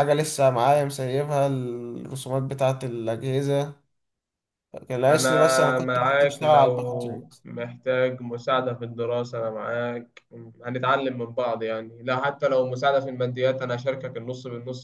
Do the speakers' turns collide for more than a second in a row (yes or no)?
yes